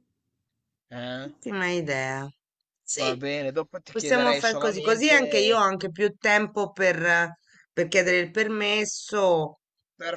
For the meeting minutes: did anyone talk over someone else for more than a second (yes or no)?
yes